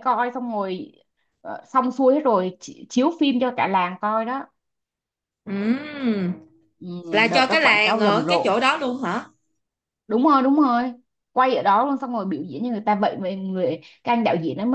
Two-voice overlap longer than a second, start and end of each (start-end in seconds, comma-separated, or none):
7.3-8.6